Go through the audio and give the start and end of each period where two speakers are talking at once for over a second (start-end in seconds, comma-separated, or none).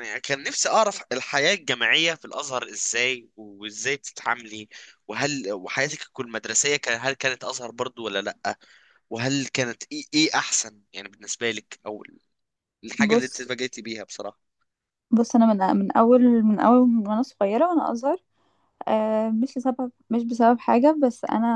none